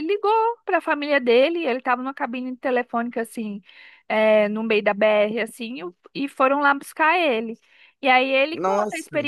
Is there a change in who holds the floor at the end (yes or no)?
no